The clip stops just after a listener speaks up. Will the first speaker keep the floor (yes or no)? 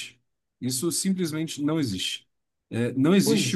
yes